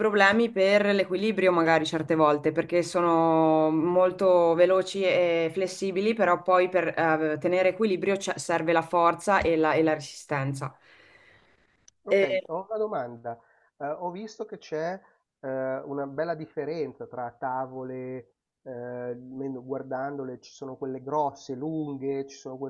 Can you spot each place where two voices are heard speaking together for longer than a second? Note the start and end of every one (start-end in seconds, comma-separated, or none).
none